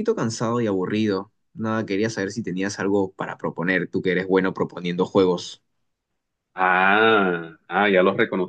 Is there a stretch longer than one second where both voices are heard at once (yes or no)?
no